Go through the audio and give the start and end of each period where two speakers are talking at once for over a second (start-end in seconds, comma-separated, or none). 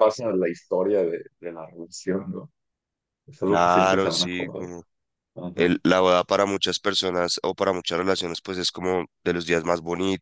3.5-4.7